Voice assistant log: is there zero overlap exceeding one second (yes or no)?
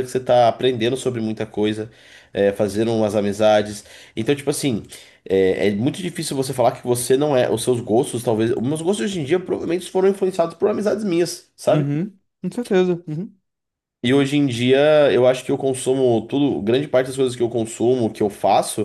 yes